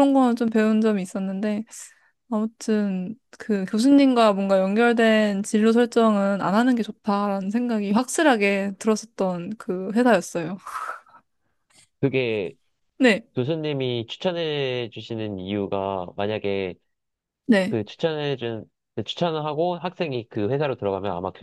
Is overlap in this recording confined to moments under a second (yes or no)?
yes